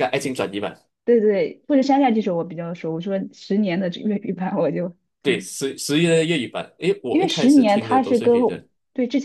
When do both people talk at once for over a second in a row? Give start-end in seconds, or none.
7.1-8.3